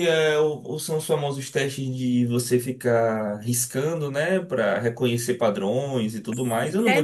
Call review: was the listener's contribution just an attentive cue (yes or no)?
no